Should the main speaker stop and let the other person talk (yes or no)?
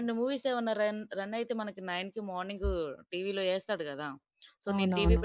no